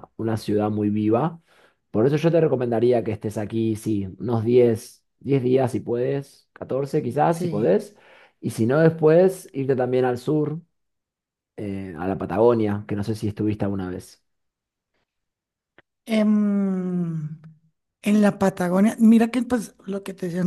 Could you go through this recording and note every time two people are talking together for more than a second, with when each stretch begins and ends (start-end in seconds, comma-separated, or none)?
none